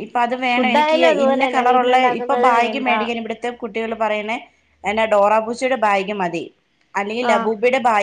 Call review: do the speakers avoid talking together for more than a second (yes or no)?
no